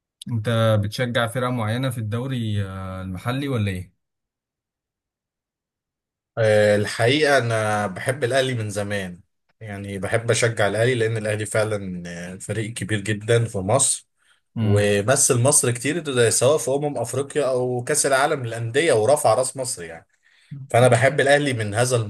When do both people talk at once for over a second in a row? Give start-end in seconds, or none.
none